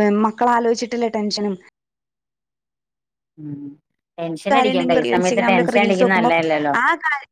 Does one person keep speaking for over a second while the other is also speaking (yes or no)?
yes